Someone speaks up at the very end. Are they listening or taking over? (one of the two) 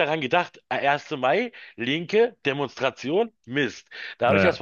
listening